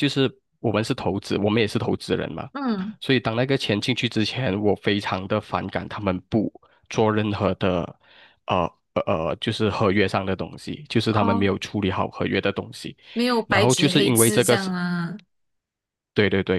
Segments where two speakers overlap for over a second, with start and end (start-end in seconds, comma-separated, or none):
13.5-14.7